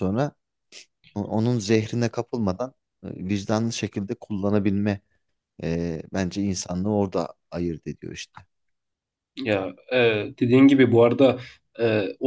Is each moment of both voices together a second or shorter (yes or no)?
yes